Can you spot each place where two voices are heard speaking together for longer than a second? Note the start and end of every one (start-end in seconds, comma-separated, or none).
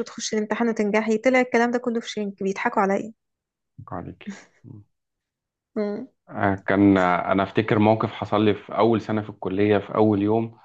none